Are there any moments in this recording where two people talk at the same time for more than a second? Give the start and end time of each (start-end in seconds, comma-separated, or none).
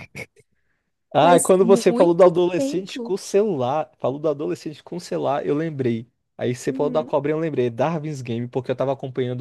1.2-3.1